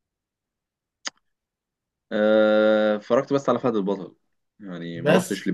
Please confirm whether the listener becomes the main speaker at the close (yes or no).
no